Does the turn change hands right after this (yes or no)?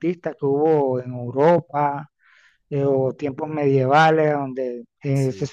no